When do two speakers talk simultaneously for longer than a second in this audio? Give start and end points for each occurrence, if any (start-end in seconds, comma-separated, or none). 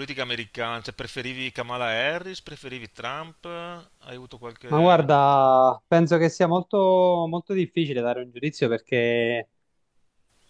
none